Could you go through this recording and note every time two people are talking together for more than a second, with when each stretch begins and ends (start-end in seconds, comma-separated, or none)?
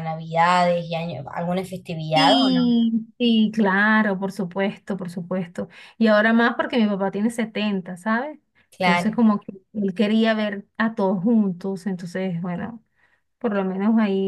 none